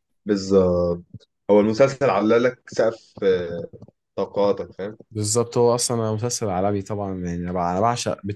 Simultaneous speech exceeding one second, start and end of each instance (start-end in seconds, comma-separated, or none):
none